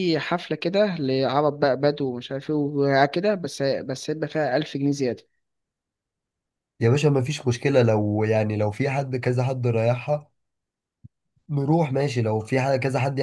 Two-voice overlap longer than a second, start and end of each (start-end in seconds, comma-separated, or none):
none